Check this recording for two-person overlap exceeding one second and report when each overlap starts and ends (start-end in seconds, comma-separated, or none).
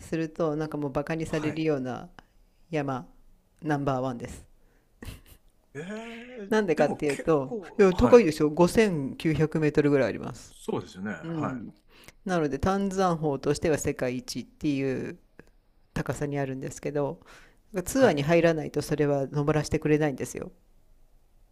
6.5-8.3